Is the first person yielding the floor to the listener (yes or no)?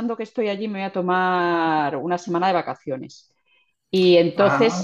no